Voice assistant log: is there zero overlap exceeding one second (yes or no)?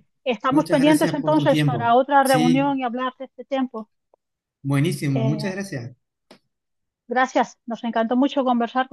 no